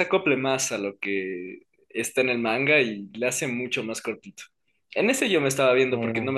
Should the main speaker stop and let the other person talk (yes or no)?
no